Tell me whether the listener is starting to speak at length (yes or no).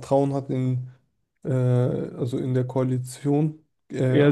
yes